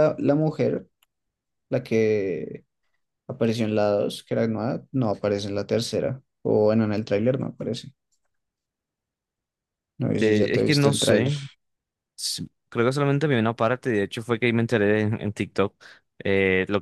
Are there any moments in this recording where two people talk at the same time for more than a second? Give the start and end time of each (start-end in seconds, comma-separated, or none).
10.1-11.3